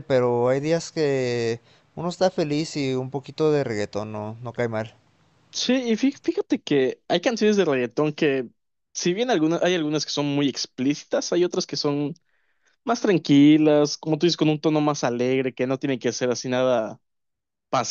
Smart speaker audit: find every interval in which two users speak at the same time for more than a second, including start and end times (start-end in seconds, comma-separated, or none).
none